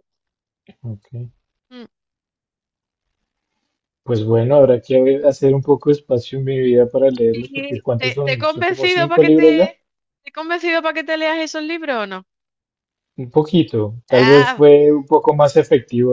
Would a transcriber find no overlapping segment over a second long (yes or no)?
no